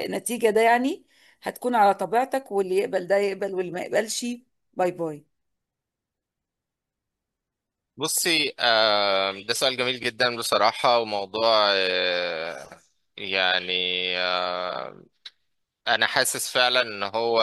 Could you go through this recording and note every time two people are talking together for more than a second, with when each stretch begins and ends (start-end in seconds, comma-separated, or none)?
none